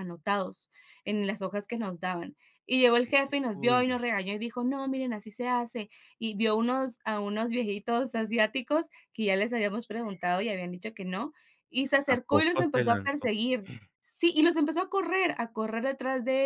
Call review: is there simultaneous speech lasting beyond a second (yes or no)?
yes